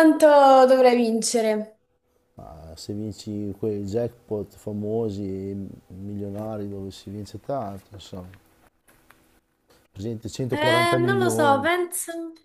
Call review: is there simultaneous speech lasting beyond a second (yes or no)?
yes